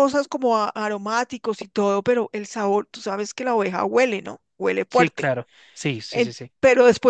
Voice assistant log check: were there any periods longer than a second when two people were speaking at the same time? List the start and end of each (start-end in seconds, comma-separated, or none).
none